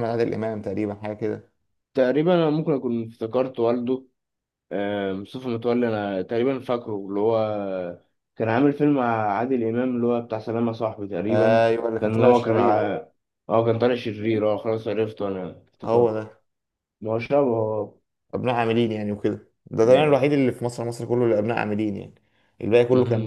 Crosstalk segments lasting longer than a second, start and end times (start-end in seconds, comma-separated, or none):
11.3-12.9